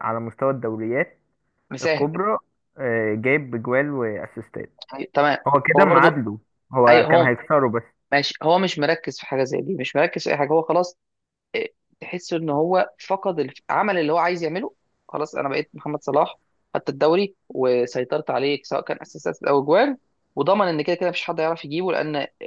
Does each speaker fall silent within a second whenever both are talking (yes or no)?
yes